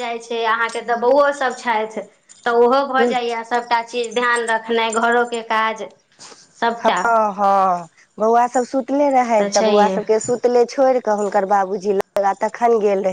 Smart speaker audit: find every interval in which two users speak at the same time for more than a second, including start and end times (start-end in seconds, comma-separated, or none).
none